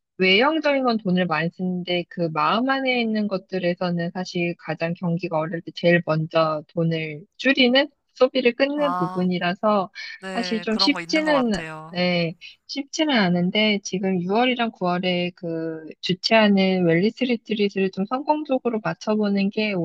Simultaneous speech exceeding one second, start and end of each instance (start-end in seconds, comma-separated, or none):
10.3-12.0